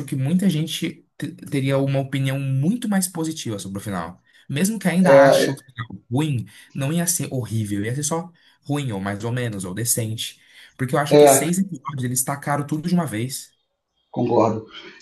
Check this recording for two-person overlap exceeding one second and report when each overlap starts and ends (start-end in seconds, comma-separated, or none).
none